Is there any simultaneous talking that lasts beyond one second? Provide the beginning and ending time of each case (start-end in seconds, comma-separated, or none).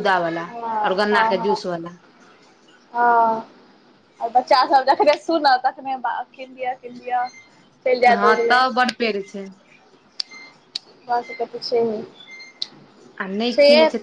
none